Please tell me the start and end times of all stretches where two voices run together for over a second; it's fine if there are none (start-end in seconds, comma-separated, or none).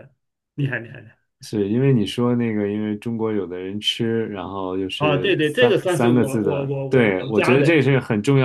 5.0-7.7